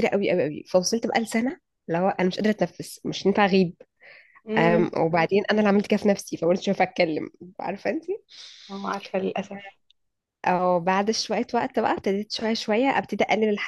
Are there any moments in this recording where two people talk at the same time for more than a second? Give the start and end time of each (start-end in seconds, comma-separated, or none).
none